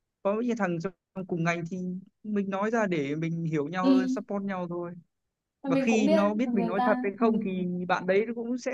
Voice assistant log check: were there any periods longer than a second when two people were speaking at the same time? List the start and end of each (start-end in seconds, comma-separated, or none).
5.7-7.2